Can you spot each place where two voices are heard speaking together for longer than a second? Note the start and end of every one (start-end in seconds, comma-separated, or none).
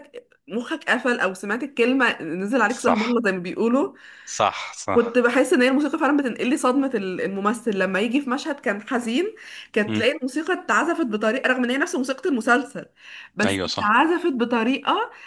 none